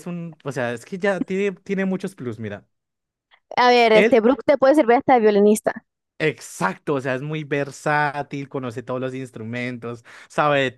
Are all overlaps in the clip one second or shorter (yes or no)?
yes